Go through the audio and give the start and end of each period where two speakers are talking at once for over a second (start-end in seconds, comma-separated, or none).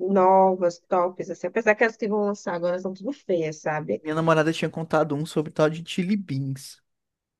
none